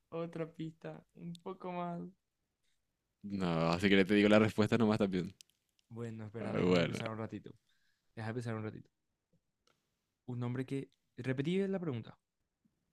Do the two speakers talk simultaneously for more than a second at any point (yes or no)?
no